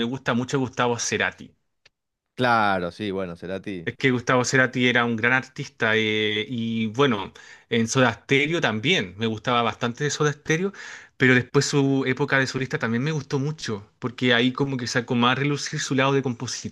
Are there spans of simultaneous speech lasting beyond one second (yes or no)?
no